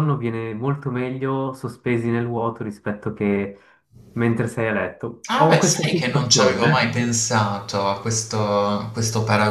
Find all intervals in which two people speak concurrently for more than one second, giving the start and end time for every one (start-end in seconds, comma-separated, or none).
5.3-7.0